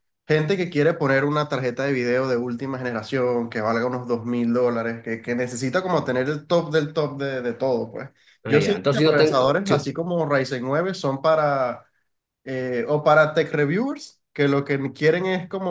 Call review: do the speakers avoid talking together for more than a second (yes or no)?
no